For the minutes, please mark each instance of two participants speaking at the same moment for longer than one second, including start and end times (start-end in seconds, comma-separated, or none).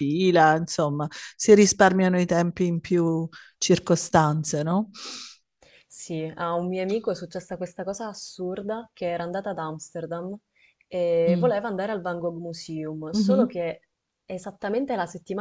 none